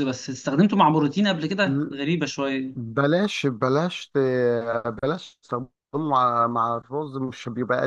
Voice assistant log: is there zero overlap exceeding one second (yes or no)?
yes